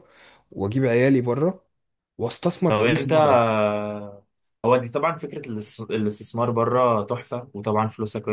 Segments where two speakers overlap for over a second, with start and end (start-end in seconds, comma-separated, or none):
none